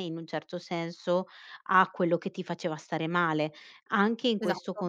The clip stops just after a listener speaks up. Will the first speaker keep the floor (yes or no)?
yes